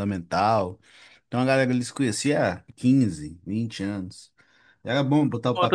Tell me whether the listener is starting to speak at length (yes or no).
yes